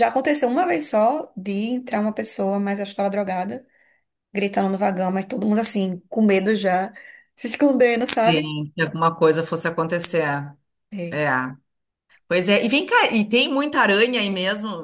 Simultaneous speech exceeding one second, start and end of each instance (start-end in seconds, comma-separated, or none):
none